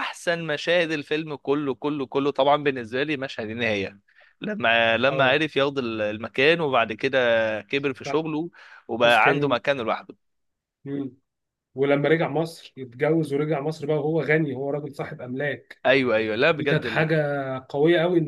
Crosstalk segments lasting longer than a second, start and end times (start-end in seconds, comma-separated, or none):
none